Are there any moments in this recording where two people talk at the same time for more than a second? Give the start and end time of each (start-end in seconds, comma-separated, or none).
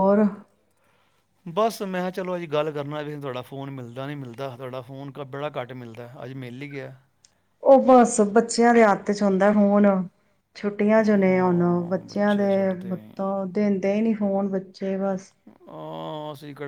11.0-12.5